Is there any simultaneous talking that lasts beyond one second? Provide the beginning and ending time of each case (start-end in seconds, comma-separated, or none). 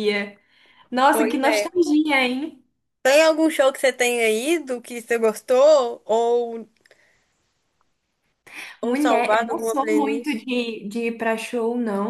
8.8-10.5